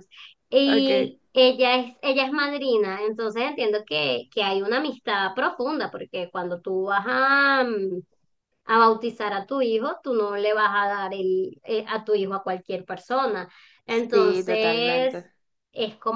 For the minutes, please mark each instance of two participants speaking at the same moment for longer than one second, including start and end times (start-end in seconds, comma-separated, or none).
13.9-15.3